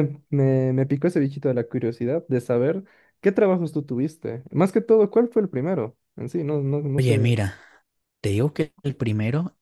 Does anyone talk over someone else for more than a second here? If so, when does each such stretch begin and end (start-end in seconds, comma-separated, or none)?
none